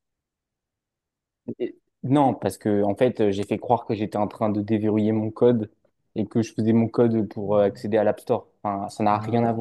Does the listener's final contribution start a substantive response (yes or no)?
yes